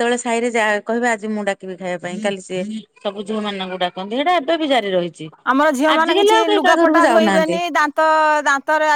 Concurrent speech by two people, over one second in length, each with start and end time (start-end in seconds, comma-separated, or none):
6.0-7.6